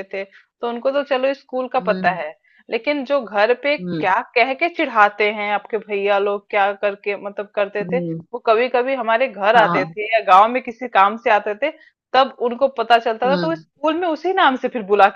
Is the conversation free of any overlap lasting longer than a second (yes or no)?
yes